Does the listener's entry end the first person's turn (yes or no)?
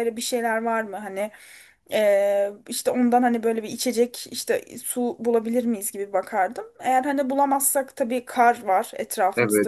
yes